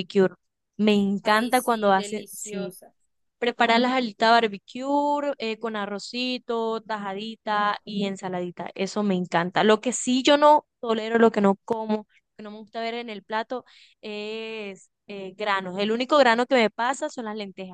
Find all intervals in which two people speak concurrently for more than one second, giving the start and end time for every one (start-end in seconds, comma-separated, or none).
1.2-2.8